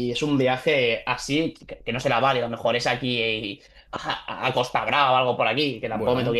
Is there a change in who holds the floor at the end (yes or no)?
no